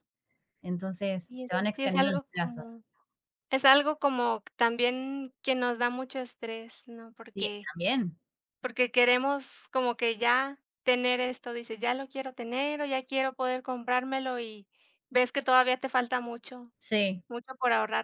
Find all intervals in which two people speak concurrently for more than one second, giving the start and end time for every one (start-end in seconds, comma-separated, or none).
1.2-2.8